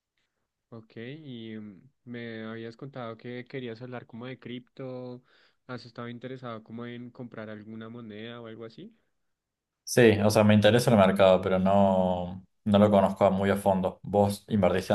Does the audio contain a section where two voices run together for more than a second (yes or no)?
no